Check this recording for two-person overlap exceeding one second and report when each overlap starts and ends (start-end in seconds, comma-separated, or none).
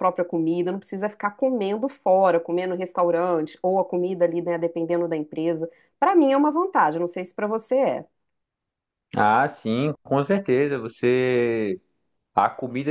none